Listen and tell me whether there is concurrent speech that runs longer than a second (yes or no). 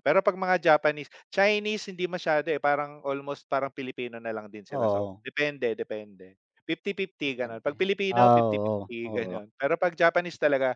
yes